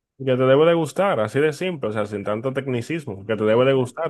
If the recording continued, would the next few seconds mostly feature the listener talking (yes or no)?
yes